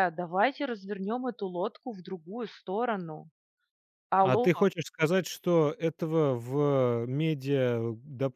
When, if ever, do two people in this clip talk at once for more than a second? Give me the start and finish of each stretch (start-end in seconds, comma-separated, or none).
none